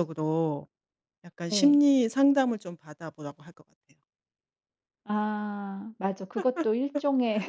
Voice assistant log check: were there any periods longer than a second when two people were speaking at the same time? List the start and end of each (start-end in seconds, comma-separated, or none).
none